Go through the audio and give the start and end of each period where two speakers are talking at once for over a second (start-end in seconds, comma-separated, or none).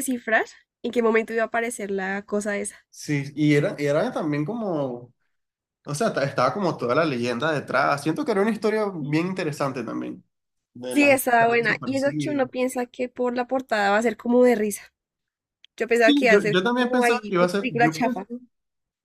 10.9-12.5, 15.9-18.3